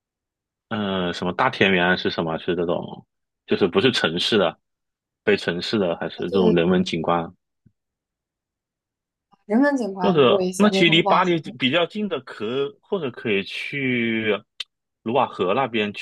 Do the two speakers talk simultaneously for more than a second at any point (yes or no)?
yes